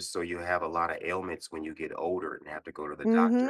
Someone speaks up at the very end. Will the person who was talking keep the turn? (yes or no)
no